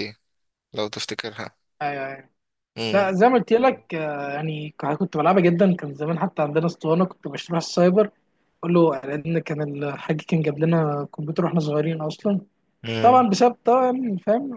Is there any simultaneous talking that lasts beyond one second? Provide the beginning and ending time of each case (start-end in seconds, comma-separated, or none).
none